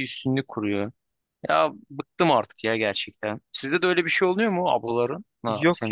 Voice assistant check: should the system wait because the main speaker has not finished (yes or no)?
no